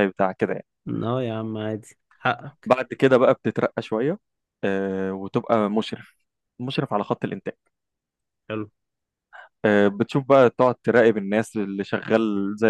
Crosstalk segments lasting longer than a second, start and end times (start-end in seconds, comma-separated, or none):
none